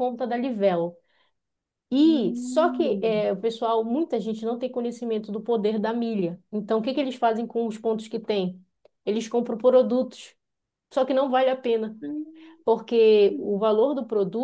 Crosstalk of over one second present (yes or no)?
yes